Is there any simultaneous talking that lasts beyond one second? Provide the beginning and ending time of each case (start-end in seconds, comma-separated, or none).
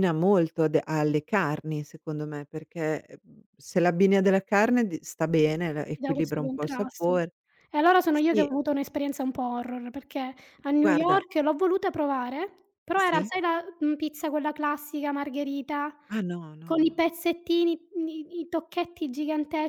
5.9-7.2